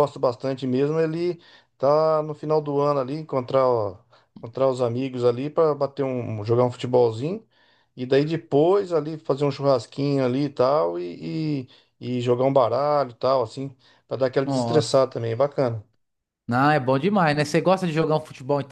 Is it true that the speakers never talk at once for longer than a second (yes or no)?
yes